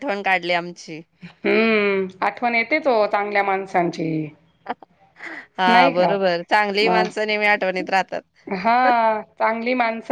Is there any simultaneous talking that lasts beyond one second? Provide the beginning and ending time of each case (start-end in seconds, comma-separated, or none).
none